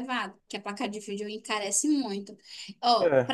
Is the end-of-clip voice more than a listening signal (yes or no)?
no